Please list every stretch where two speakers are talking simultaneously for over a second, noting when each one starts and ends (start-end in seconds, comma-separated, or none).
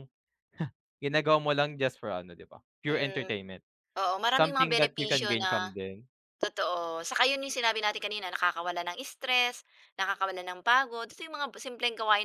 4.3-5.7